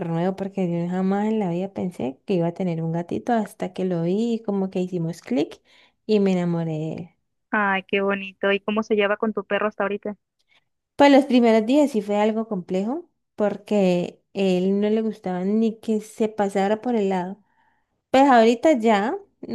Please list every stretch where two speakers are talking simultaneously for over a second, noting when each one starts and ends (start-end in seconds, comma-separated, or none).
none